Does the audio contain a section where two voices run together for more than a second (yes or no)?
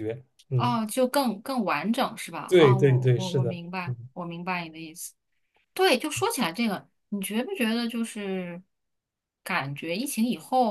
yes